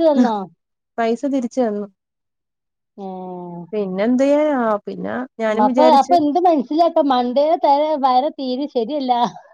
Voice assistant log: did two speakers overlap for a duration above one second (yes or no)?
no